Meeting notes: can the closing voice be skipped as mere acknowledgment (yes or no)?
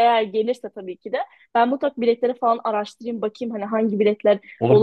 yes